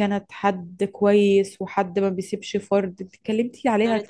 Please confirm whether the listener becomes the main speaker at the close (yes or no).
yes